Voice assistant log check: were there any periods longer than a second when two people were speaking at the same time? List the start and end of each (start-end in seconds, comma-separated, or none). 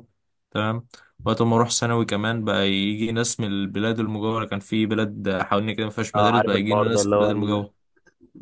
6.2-7.7